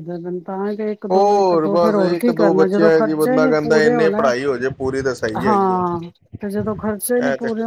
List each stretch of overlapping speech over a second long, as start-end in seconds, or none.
1.1-4.3